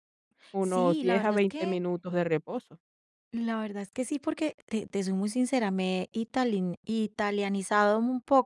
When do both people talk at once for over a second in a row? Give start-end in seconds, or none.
0.6-1.8